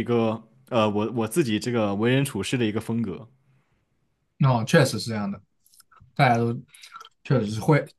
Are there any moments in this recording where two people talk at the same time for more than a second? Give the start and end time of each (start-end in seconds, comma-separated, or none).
none